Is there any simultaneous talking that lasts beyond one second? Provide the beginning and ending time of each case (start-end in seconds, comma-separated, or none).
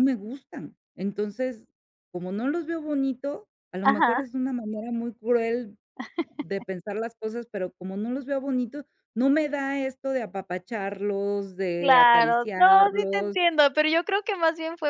11.8-13.4